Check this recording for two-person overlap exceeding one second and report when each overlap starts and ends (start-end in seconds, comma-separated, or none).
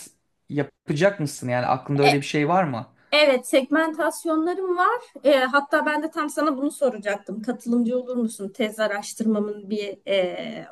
none